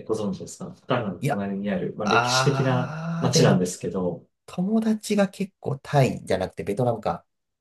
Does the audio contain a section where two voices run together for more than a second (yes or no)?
yes